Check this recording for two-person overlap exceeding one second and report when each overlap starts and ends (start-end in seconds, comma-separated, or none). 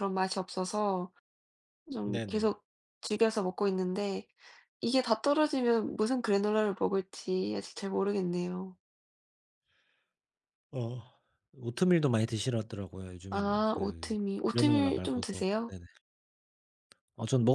13.3-15.8